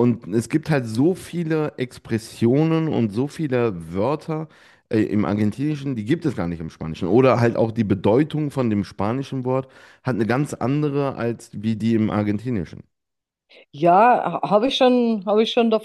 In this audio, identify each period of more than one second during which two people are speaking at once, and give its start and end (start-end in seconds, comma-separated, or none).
none